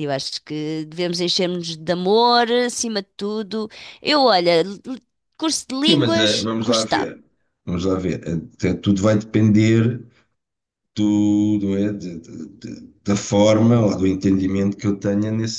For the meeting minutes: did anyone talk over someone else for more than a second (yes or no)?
yes